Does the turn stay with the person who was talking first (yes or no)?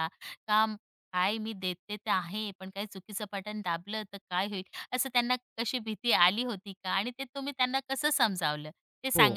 no